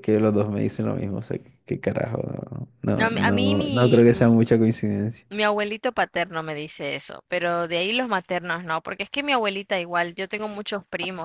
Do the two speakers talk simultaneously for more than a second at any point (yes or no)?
yes